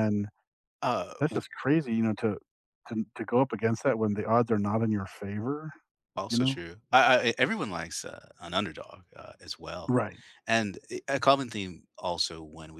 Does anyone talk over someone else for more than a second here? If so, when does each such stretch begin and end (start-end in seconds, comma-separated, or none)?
none